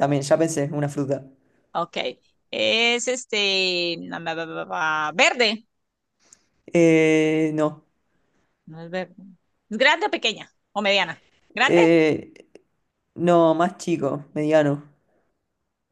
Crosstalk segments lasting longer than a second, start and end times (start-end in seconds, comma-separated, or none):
none